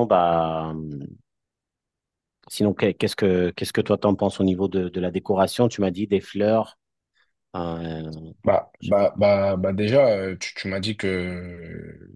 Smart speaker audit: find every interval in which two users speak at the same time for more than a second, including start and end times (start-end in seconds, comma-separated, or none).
none